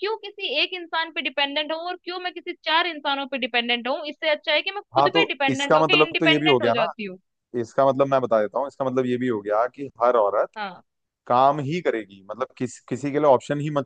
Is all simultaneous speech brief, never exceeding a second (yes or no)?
no